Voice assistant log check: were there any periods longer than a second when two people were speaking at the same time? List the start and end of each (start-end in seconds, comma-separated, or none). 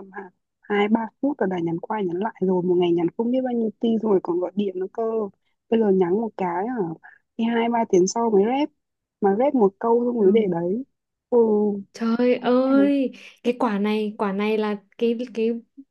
none